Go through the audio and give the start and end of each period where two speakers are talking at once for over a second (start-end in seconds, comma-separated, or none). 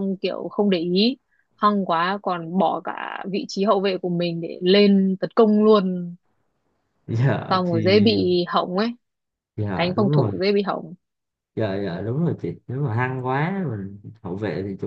none